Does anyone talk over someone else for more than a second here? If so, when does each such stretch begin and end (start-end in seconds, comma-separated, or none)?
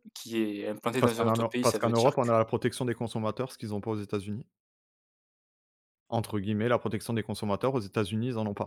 1.0-2.4